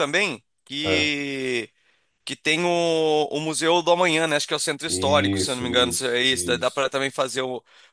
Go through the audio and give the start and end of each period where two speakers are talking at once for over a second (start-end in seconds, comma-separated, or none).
4.9-6.9